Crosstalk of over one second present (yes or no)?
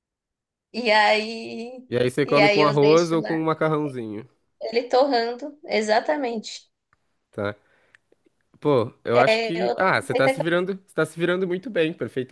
yes